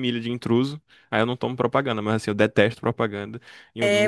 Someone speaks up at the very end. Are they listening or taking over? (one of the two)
taking over